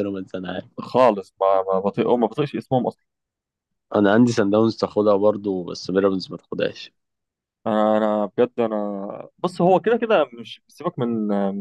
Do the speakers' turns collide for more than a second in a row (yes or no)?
no